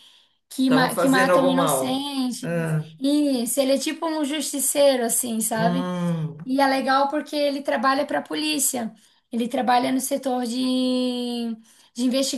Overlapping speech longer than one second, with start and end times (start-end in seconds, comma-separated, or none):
0.6-2.9